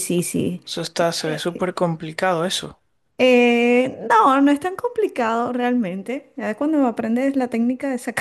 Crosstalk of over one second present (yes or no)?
no